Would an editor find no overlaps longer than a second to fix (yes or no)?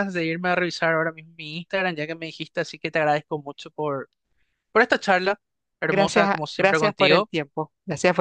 no